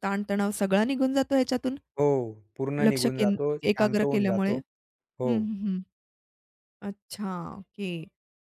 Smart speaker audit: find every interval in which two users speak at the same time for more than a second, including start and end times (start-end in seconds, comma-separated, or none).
2.9-4.5